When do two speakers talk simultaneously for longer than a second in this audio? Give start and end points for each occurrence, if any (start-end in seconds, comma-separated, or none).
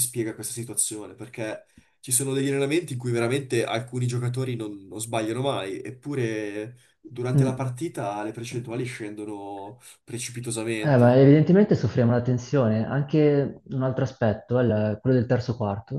none